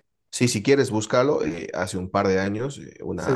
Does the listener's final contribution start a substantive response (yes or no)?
no